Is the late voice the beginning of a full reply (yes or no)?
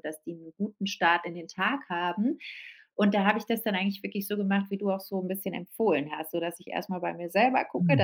no